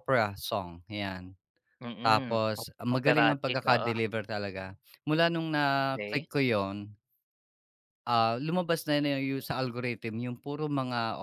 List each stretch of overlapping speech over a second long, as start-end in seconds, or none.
2.0-3.9